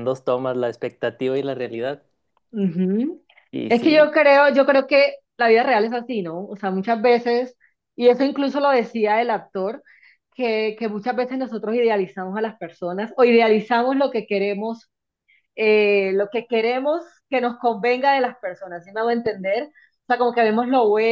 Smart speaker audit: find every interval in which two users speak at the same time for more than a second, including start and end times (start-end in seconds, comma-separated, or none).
none